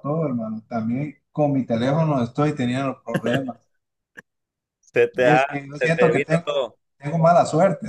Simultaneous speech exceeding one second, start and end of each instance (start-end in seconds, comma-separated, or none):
5.2-6.8